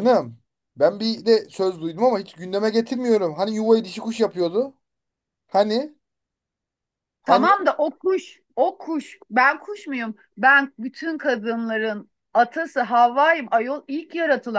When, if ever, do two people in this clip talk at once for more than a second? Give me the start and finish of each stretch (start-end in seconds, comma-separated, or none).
none